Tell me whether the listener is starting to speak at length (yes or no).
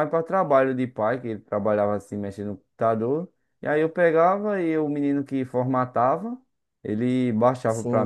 yes